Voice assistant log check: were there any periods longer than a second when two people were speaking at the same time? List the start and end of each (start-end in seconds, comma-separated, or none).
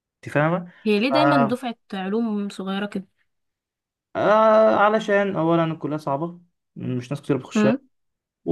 none